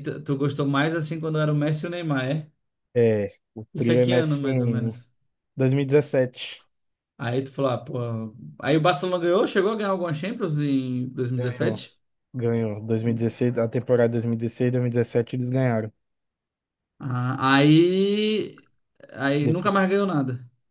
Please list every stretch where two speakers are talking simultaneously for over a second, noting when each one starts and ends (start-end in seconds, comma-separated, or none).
3.7-5.0